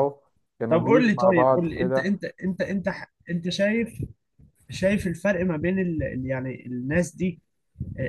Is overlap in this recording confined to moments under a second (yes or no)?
no